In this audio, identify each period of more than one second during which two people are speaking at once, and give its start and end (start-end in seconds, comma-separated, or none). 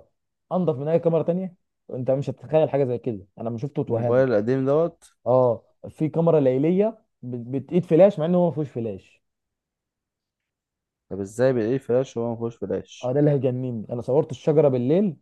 none